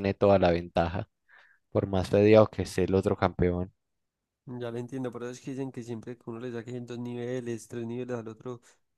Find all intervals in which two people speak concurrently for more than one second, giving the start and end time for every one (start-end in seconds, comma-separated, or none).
none